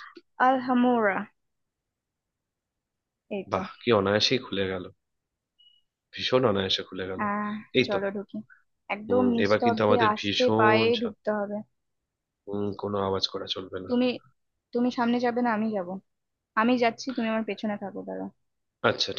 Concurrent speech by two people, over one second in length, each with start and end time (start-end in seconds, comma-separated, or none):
9.1-11.2